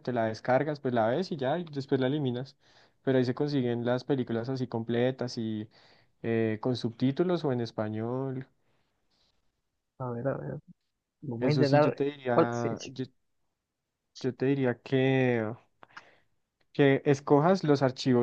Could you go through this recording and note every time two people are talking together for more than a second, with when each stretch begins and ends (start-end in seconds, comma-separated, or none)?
11.4-12.9